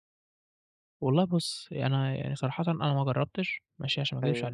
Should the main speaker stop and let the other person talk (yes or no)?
no